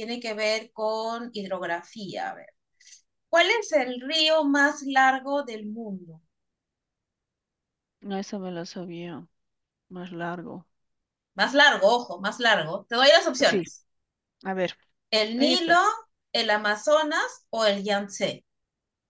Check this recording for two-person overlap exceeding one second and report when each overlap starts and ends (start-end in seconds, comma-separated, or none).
none